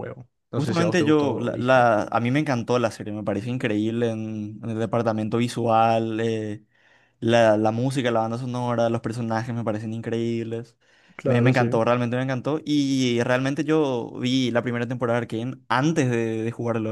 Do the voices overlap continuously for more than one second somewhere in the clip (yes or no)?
yes